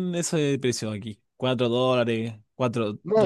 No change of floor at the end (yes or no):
no